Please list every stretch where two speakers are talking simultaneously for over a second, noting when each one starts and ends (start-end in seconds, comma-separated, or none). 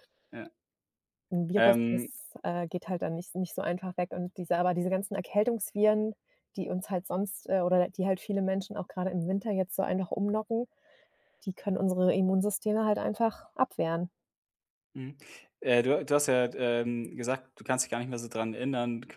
none